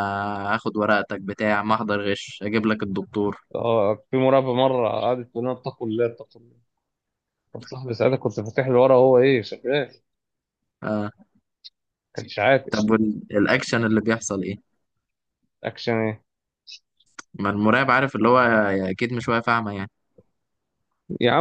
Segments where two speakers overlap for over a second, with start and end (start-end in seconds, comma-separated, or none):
none